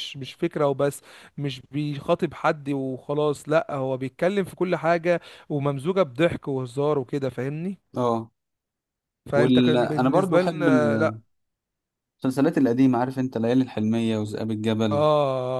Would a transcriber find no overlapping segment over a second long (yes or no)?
no